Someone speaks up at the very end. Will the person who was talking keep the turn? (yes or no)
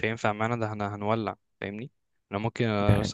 yes